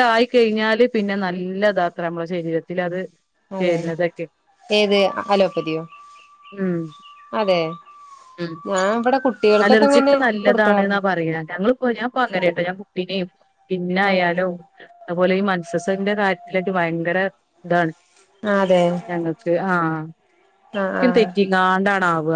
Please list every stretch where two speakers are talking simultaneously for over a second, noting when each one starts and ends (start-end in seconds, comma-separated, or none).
none